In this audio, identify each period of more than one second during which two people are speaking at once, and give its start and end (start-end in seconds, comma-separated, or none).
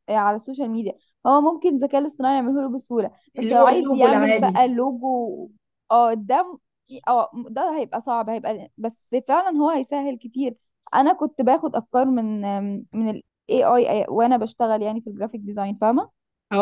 3.4-4.7